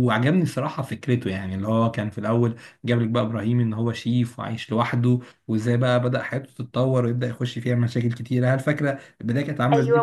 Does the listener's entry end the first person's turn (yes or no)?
yes